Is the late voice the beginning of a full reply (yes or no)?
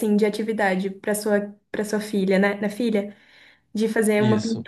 no